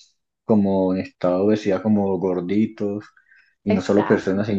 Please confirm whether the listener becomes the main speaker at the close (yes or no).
no